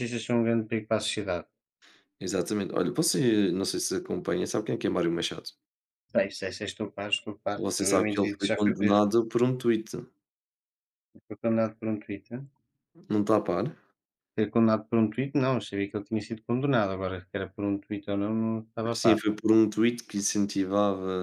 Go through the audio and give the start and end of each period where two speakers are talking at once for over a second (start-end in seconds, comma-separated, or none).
7.5-9.0